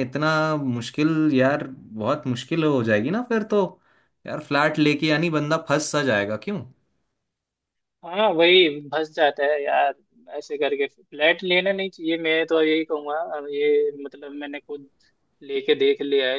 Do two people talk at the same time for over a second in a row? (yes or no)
no